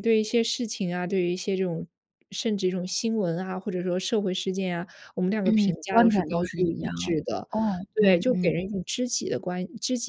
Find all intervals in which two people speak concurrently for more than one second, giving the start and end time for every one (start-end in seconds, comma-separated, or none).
5.4-6.9